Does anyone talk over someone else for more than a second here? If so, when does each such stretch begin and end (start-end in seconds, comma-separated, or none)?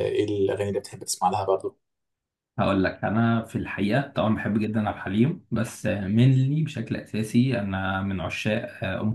none